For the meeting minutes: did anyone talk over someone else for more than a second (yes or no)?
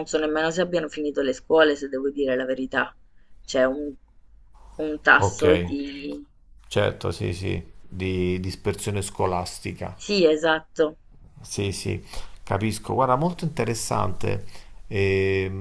no